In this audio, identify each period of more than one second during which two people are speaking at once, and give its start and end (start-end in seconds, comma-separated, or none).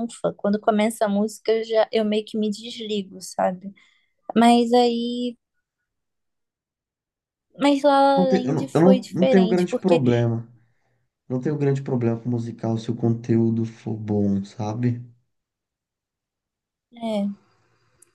8.2-10.0